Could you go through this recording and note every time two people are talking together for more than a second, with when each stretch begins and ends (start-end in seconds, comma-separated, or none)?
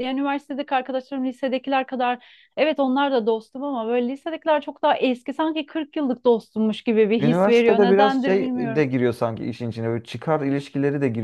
7.2-8.8